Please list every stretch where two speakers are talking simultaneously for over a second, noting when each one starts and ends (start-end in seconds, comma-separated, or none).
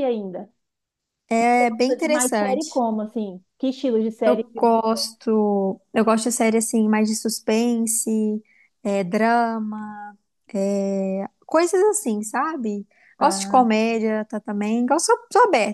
1.4-2.8